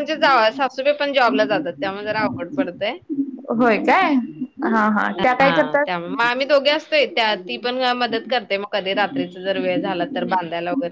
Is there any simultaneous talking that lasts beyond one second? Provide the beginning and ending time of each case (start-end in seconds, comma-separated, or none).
none